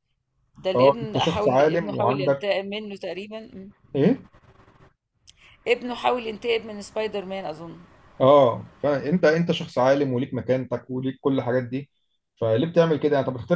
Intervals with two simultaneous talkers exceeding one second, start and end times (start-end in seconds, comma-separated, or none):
0.8-2.5